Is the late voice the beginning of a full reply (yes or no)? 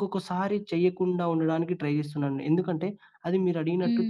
no